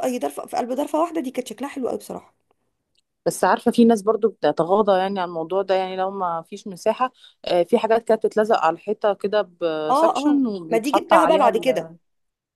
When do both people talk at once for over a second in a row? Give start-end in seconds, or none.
9.9-11.9